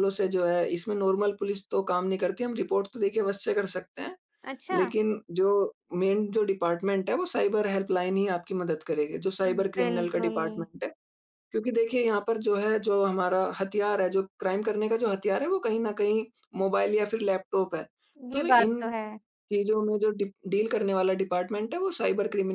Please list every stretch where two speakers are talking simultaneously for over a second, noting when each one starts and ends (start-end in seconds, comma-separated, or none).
9.4-10.7